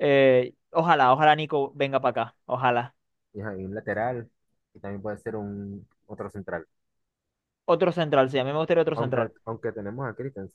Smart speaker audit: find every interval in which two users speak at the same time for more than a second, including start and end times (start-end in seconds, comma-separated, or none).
none